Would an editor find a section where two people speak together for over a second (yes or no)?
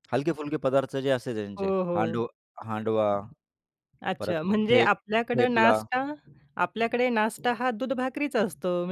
yes